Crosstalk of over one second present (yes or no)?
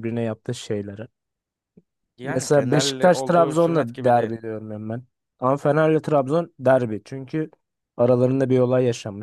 yes